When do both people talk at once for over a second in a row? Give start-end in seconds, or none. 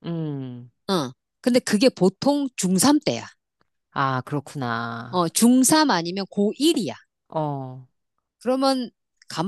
none